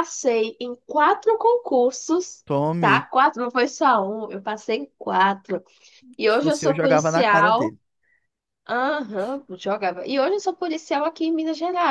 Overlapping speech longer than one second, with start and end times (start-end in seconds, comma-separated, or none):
6.3-7.7